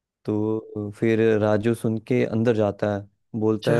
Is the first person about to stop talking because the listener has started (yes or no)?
no